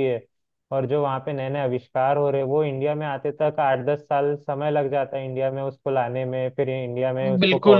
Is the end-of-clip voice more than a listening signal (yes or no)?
yes